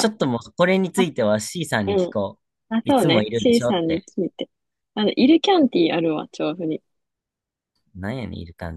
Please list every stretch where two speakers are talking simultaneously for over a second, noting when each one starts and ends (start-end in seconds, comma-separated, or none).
2.8-4.1